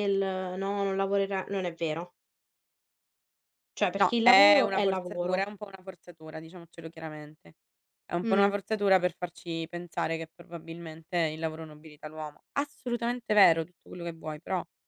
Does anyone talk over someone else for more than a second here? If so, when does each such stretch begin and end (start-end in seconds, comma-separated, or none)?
4.0-5.5